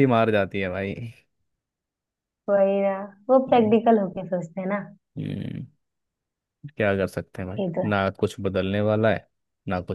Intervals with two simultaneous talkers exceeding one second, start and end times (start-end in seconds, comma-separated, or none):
none